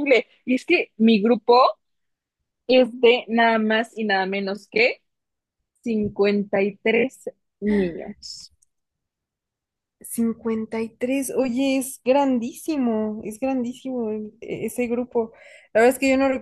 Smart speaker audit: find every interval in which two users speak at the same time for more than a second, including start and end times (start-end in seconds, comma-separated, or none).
none